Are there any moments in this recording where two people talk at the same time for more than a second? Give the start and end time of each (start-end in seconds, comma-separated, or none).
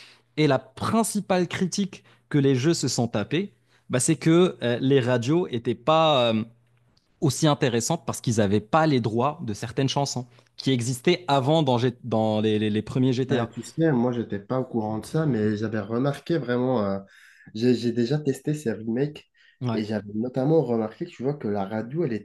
none